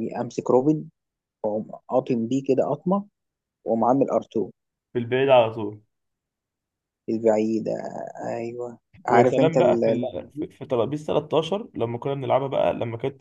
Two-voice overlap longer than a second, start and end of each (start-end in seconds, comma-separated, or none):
9.1-10.5